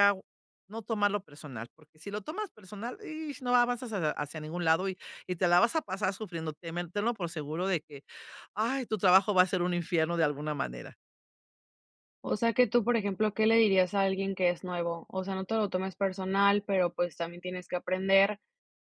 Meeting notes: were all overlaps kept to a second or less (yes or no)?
yes